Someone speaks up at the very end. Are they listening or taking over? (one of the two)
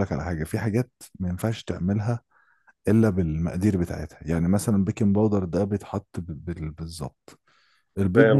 listening